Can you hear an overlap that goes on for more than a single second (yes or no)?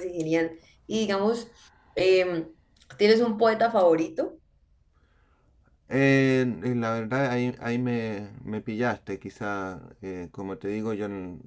no